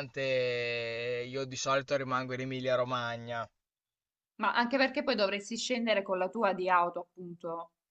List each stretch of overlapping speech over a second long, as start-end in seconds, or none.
none